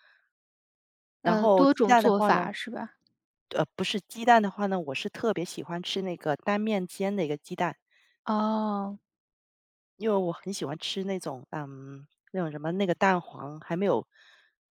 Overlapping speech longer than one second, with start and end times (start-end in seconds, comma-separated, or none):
1.2-2.5